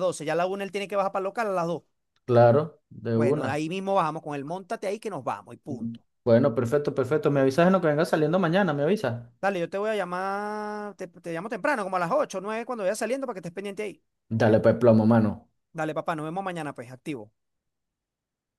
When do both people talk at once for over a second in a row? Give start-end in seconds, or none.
none